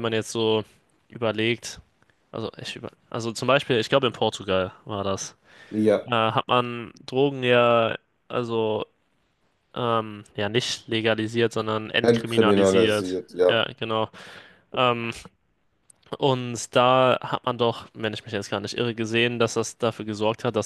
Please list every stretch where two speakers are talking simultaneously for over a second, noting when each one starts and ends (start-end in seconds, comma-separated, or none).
12.0-13.6